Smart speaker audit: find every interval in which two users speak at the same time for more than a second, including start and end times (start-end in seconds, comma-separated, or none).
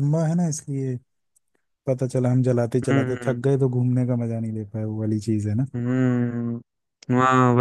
none